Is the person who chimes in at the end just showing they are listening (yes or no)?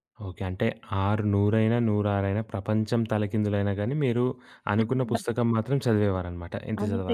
no